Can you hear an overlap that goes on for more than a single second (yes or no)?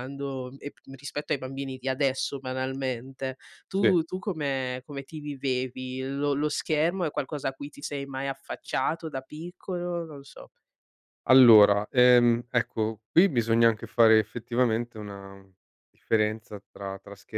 no